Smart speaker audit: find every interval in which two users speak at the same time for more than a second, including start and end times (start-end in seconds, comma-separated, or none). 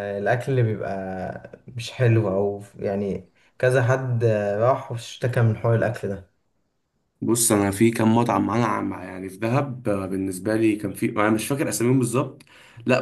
none